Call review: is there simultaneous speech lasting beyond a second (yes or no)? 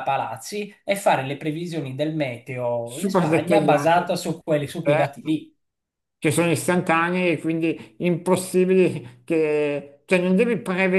yes